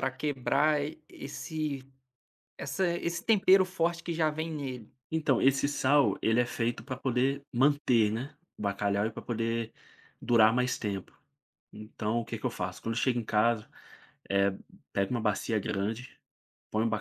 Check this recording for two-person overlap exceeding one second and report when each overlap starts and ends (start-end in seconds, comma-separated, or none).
none